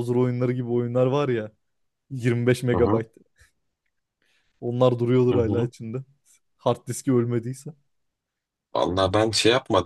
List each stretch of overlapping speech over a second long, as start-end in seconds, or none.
none